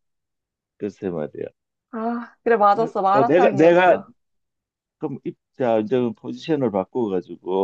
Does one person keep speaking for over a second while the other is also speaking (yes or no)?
yes